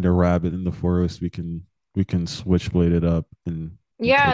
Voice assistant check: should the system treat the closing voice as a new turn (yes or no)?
yes